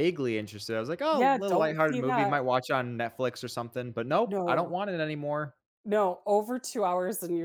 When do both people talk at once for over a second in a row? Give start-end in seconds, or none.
1.1-2.4